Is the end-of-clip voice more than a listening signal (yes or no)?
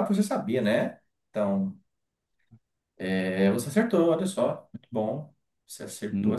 no